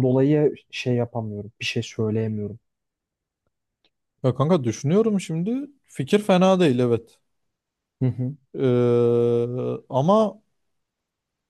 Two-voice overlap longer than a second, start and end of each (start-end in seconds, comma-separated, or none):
none